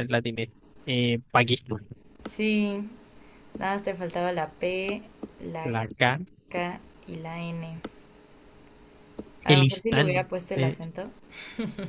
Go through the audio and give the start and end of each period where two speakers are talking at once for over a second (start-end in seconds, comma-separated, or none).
9.5-10.8